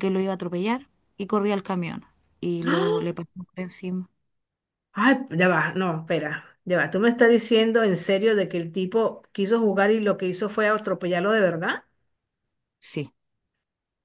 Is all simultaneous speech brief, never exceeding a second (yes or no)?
yes